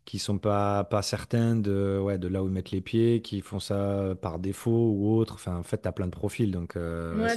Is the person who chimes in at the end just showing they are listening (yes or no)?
no